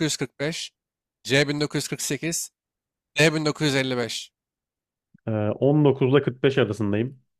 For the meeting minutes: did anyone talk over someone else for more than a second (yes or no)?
no